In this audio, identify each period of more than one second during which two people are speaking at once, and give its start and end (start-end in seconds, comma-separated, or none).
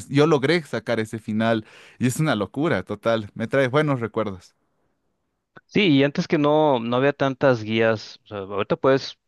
none